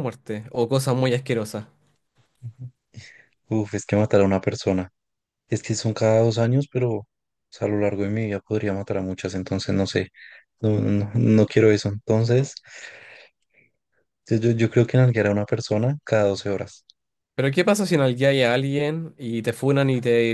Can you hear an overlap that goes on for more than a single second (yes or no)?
no